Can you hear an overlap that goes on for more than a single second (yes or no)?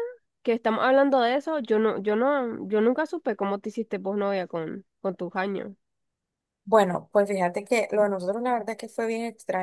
no